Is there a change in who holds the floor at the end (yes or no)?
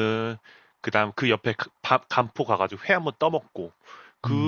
no